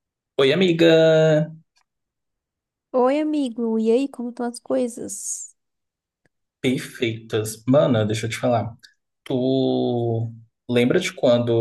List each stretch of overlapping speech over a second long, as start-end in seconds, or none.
none